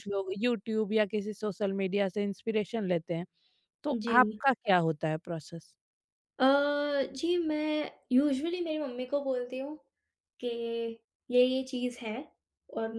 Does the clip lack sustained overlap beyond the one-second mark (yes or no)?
yes